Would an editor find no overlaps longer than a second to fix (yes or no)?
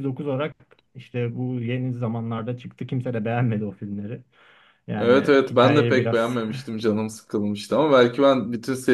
no